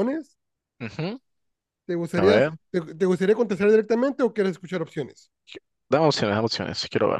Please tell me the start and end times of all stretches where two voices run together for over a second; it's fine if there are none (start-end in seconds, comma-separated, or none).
none